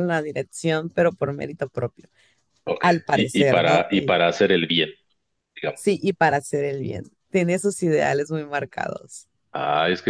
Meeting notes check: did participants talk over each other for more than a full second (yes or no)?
yes